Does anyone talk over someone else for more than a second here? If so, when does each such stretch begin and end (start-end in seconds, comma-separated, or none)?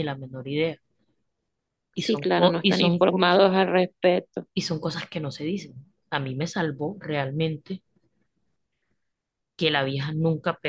2.0-3.4